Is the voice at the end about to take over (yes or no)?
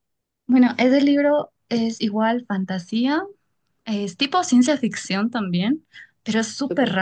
no